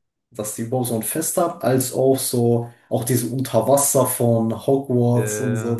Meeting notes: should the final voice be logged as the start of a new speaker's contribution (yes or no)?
no